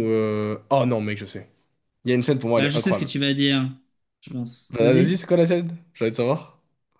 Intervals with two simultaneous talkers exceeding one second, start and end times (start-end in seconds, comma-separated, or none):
none